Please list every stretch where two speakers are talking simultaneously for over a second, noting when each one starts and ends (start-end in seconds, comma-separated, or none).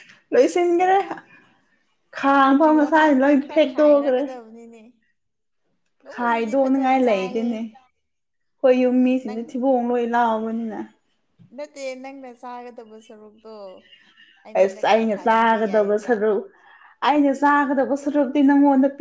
6.1-7.5, 14.6-16.1